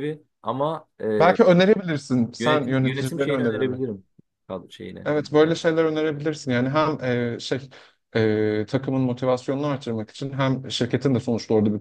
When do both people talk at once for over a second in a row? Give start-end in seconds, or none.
2.4-3.8